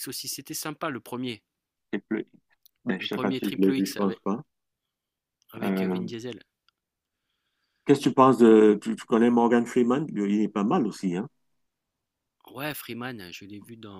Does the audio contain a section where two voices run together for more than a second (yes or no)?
yes